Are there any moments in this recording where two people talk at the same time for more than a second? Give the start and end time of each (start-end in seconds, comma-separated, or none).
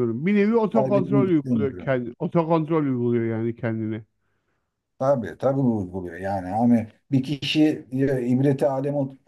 0.7-2.0